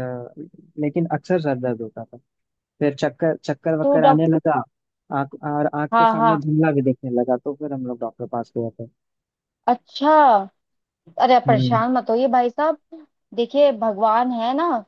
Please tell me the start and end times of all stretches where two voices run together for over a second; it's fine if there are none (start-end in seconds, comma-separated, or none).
none